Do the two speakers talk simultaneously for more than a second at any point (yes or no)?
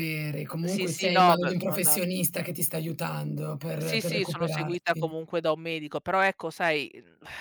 yes